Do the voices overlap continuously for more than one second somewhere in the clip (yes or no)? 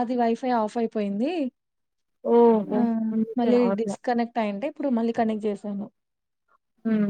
no